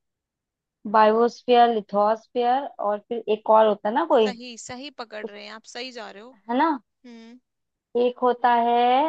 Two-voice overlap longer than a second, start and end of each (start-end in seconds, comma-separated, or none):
none